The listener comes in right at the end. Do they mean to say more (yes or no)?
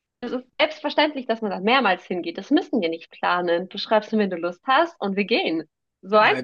yes